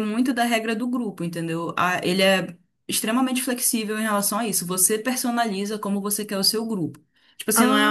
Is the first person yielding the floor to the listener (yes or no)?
no